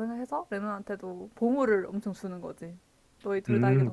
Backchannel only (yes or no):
no